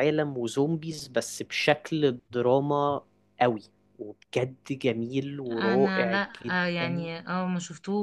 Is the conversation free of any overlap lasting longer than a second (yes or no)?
no